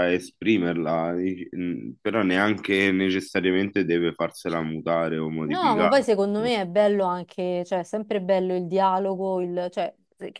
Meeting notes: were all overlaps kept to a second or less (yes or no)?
yes